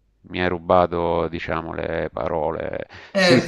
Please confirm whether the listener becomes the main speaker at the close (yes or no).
yes